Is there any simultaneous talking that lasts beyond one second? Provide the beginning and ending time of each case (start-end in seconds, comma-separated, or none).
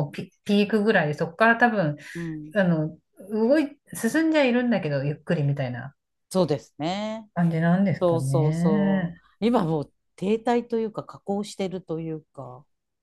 8.0-9.2